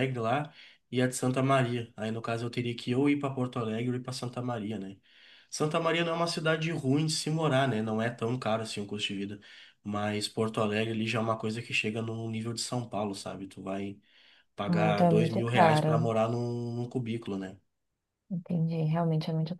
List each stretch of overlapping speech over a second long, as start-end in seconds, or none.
14.7-16.1